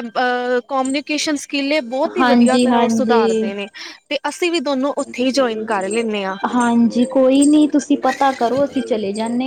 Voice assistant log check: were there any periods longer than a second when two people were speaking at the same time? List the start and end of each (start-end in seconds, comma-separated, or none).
2.2-3.5